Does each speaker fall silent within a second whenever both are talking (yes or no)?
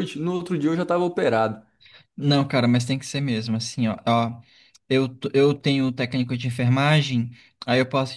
yes